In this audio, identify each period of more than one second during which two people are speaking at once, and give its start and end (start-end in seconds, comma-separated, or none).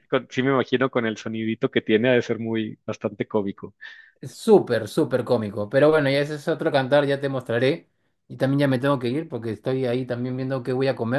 none